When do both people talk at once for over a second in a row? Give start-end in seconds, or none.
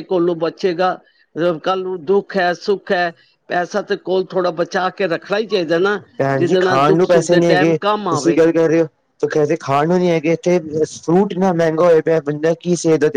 6.3-8.4